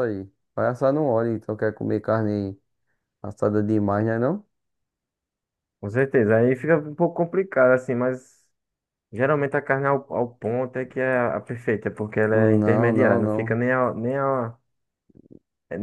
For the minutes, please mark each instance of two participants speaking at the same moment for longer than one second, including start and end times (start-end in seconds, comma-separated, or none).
12.3-13.6